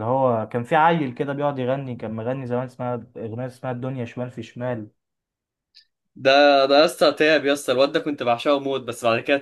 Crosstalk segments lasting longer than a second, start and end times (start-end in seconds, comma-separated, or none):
none